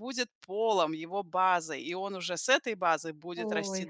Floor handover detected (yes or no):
no